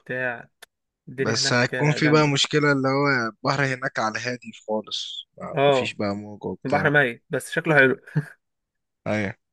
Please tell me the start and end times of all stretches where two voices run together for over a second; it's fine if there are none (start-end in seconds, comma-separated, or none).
1.2-2.5